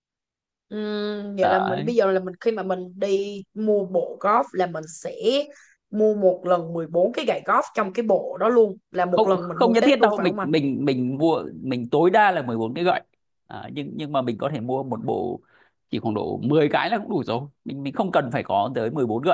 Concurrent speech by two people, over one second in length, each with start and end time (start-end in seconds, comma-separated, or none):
9.1-10.5